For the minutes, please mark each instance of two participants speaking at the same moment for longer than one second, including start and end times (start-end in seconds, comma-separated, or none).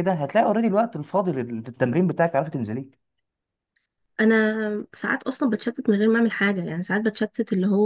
none